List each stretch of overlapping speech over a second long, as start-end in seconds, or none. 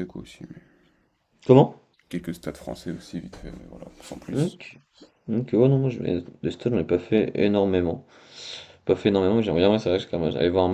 none